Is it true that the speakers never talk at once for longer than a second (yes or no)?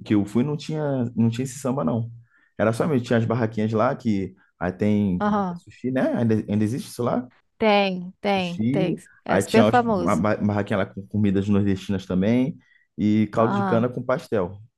no